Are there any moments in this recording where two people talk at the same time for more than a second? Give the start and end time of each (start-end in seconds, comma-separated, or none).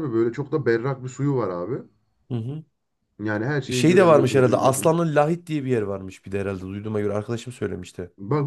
3.7-5.0